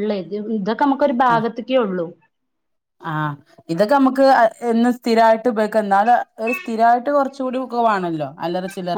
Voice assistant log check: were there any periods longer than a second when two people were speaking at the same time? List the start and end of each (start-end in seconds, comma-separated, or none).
none